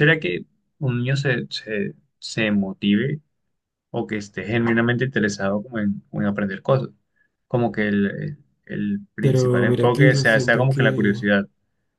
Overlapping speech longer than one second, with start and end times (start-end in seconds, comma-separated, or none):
9.2-11.2